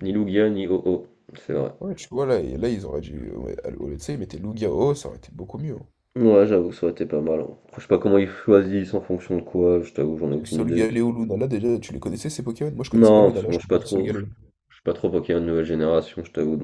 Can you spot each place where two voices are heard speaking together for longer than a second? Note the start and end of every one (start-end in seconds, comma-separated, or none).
13.0-14.2